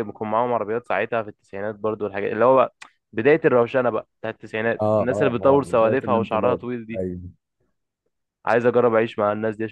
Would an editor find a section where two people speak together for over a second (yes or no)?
yes